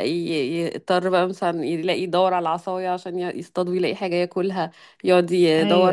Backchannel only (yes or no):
yes